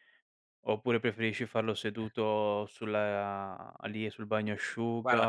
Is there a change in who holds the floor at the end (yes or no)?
no